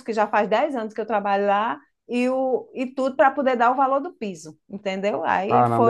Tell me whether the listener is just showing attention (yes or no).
no